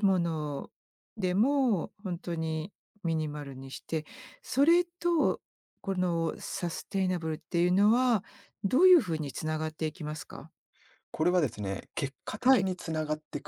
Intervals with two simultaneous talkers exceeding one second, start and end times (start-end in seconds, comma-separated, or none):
none